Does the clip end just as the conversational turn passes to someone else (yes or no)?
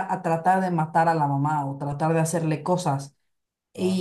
no